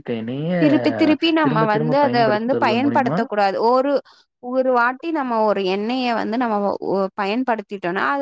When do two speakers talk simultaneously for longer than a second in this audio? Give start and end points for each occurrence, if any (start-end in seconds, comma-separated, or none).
1.4-3.2